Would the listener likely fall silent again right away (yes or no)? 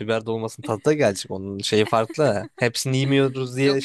no